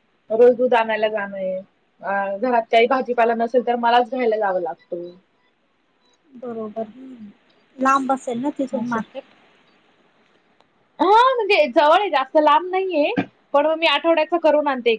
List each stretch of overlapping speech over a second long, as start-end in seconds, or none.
none